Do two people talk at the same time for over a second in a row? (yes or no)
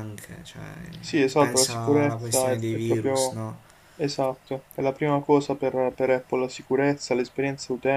yes